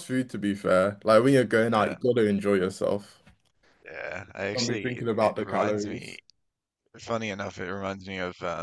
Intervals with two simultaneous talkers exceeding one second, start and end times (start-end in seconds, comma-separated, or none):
4.5-6.2